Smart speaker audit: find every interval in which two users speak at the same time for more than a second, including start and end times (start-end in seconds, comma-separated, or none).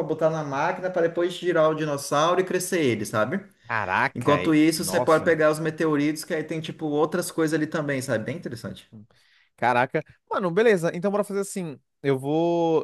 4.1-5.4